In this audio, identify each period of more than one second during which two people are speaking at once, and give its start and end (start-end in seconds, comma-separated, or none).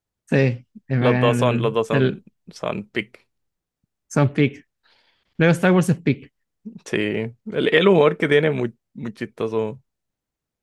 1.0-2.2